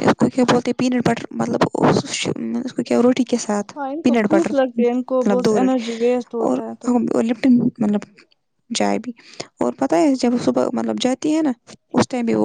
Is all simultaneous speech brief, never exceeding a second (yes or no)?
no